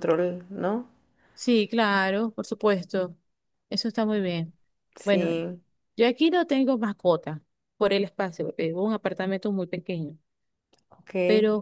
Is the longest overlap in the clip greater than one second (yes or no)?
no